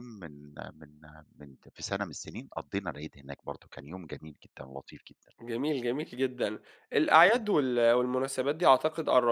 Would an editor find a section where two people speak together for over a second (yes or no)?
no